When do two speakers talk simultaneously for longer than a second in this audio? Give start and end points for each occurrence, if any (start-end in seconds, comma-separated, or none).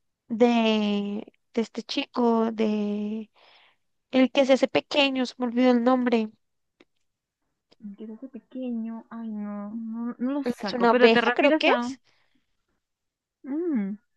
10.4-11.9